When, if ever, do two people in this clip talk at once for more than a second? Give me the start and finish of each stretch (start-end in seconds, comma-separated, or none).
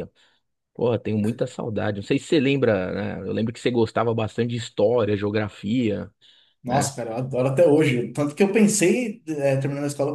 none